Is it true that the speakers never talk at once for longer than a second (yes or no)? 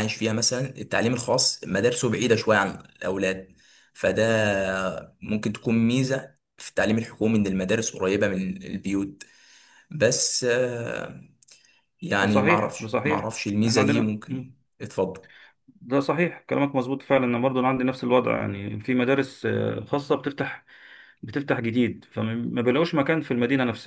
no